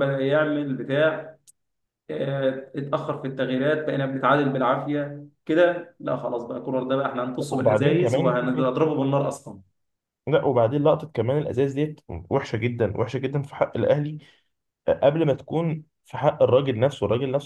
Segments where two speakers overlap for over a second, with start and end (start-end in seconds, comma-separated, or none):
7.5-8.7